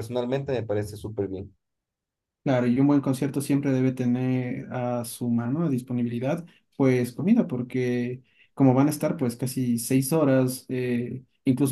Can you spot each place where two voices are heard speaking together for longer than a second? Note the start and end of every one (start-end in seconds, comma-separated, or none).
none